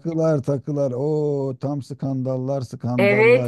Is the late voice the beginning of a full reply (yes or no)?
yes